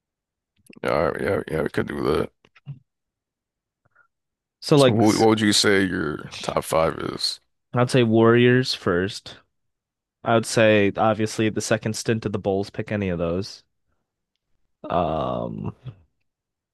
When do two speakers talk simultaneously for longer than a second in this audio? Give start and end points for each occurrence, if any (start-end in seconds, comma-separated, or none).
none